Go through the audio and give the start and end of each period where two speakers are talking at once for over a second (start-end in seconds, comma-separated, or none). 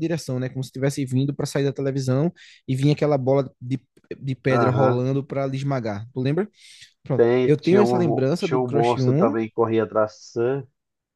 7.1-9.3